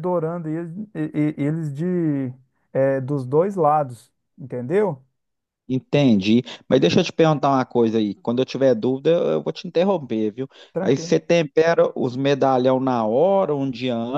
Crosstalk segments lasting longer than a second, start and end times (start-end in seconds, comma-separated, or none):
none